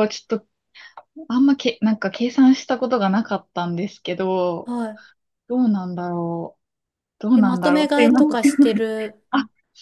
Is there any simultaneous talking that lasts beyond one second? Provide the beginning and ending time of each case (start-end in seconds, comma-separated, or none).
7.3-8.7